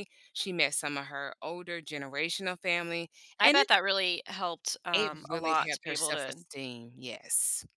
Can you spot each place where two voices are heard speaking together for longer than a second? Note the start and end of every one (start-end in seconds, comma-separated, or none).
4.9-6.4